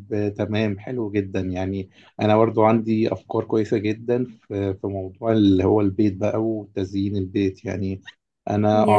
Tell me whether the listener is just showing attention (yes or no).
yes